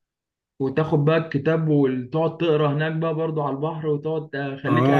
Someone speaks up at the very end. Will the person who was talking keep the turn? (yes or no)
no